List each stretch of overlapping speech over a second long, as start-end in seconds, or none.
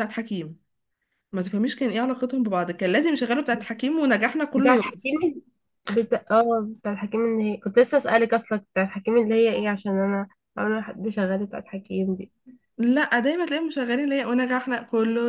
none